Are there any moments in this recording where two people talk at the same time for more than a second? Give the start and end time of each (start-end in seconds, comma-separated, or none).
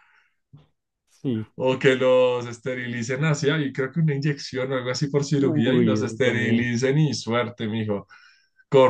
5.4-6.7